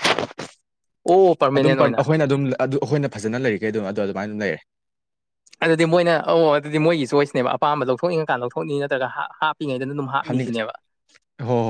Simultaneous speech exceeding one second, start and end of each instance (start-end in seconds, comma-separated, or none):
none